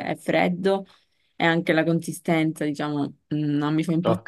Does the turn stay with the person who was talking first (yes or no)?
no